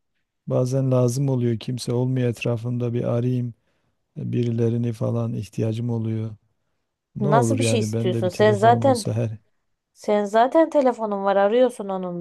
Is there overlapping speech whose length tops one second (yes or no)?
yes